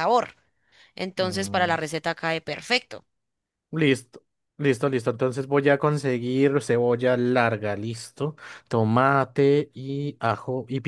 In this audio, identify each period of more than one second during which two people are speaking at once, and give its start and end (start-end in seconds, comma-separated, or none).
none